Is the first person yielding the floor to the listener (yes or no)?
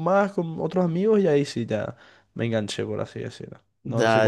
yes